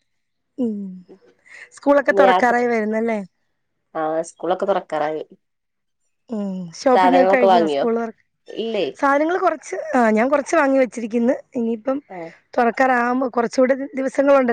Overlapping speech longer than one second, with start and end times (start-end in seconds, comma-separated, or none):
none